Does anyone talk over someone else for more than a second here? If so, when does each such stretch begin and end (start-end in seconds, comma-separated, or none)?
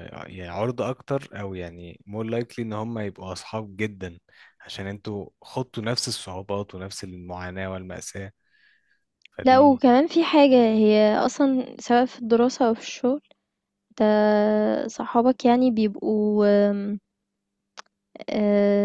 none